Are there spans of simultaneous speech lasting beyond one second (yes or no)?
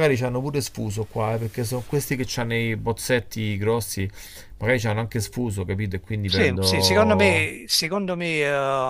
yes